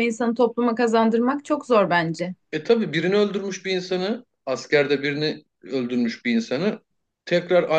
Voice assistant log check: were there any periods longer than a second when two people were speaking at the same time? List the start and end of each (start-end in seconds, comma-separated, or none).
none